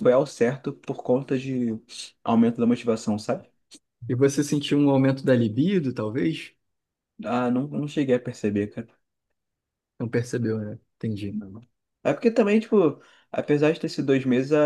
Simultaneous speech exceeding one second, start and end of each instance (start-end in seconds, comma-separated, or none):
none